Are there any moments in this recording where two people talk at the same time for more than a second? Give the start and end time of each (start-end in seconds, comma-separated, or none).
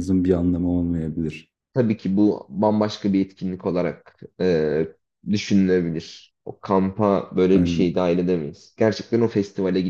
none